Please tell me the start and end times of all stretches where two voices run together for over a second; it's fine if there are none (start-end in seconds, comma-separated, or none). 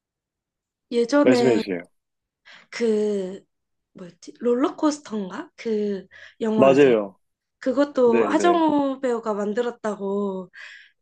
none